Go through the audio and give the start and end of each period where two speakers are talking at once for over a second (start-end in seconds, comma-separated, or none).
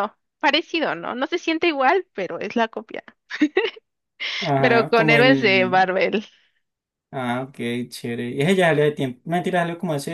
4.6-5.9